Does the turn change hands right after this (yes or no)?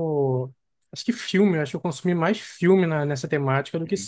yes